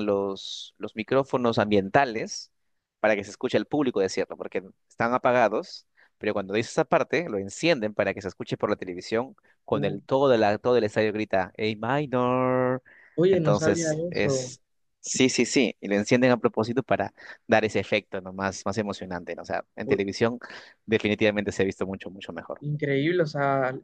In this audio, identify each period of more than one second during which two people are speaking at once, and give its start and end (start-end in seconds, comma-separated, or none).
13.3-14.6